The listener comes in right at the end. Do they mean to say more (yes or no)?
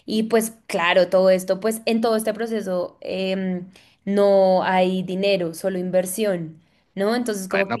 yes